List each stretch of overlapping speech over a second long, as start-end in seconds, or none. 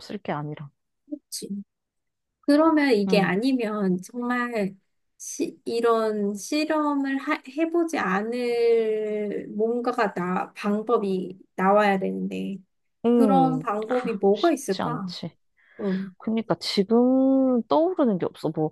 13.2-15.1